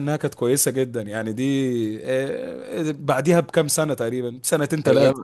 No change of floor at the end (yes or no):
no